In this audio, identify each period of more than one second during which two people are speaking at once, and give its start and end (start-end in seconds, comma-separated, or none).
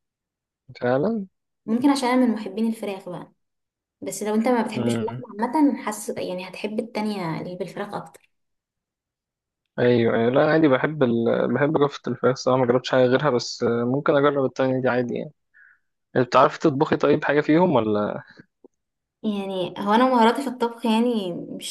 none